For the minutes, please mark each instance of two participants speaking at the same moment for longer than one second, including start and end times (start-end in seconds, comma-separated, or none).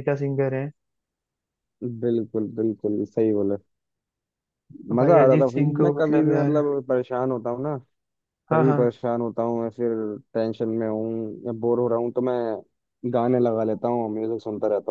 5.0-6.6